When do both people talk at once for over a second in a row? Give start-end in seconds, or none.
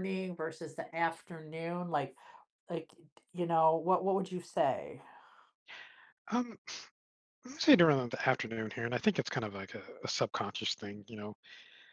none